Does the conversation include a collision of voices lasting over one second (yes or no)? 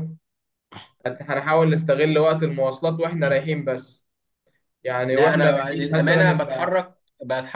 yes